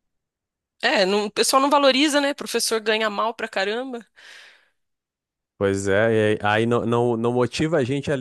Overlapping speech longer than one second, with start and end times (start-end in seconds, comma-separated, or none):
none